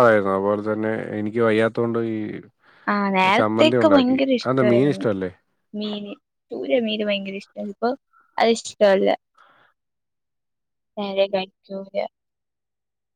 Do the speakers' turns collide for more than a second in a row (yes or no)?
yes